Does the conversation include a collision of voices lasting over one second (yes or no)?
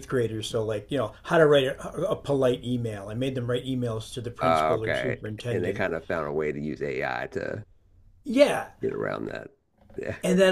yes